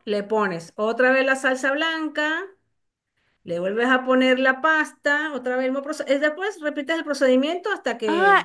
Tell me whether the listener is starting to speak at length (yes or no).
yes